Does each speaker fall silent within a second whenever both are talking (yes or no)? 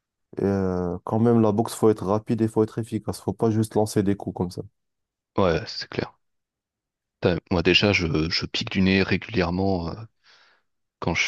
yes